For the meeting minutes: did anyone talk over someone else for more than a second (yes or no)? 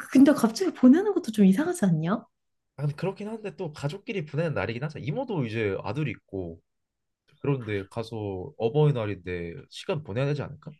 no